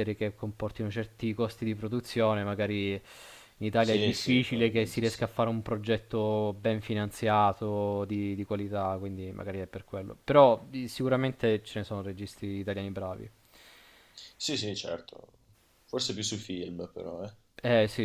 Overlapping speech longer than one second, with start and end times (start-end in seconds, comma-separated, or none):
3.8-5.3